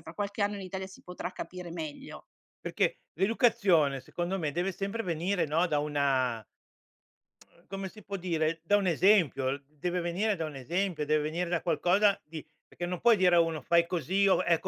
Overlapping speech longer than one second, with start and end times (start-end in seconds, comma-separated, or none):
none